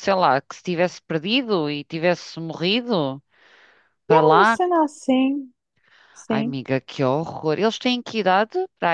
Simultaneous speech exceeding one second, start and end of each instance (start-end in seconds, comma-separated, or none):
none